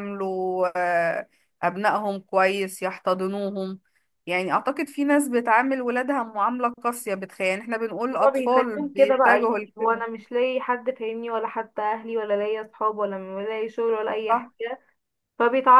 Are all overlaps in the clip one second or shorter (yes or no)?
no